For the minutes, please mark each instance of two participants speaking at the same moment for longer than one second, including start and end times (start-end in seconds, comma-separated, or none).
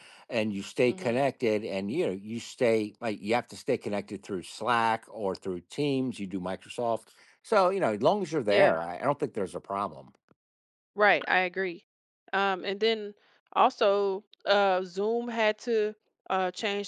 none